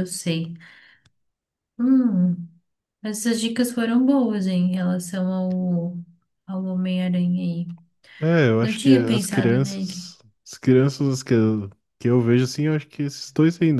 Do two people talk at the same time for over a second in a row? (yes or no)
yes